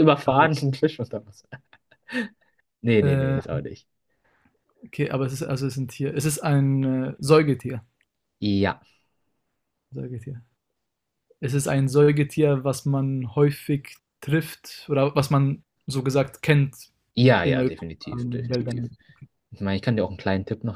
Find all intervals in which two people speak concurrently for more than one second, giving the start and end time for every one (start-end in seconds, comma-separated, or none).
17.4-18.9